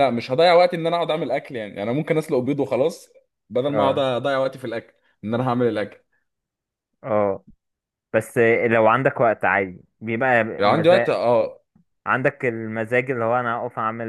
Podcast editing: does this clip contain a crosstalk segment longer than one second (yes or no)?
no